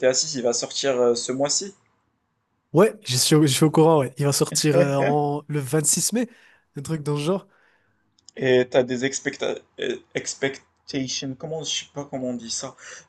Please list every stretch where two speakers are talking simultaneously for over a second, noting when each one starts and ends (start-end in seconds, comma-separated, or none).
none